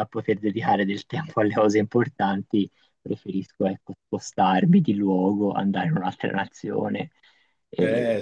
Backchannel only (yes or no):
no